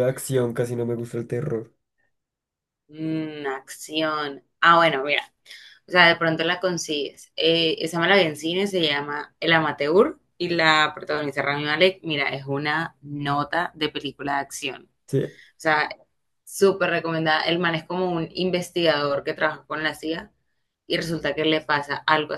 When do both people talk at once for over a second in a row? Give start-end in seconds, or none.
none